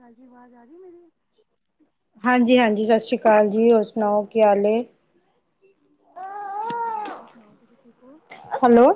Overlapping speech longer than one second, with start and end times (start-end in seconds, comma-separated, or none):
none